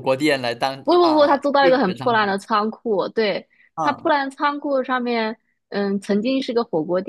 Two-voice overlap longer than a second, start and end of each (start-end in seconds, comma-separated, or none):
0.8-2.4